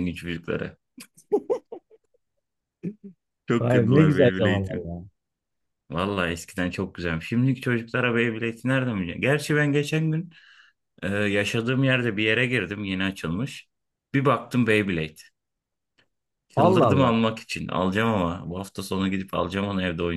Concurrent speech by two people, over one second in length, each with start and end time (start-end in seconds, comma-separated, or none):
3.6-4.9